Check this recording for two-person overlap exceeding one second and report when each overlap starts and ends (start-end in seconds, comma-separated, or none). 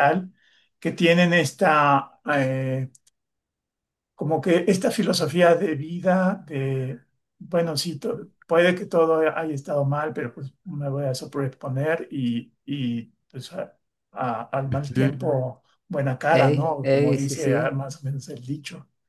16.3-17.8